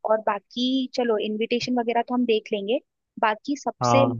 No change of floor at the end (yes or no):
yes